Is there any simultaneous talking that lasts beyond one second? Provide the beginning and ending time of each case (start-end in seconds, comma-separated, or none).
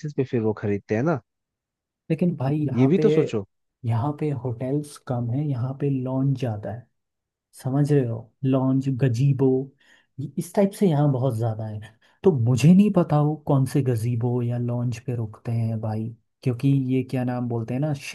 none